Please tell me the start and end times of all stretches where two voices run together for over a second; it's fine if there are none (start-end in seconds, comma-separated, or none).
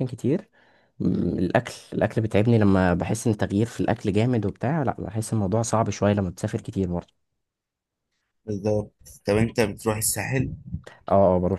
none